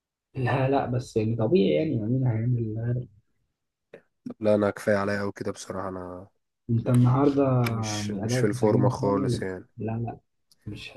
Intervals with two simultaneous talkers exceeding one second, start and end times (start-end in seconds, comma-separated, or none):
8.0-9.7